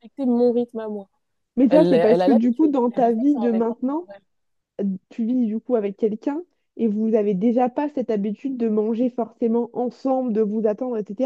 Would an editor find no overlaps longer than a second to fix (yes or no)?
no